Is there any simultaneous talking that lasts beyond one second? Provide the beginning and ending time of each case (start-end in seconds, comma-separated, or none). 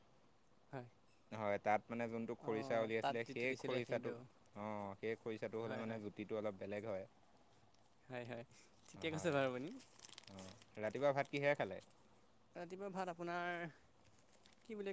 2.5-4.1